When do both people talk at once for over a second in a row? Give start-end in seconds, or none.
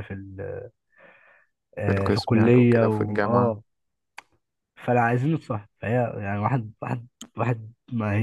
1.9-3.6